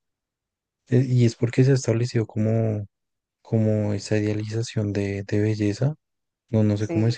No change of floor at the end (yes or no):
yes